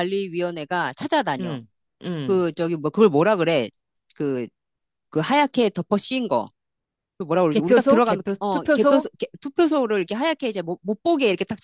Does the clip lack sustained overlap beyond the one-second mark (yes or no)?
no